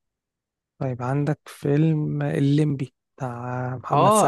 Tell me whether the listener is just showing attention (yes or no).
no